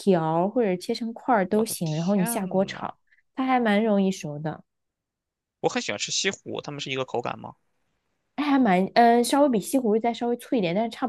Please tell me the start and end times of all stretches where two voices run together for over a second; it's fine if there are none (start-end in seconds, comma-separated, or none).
1.5-2.9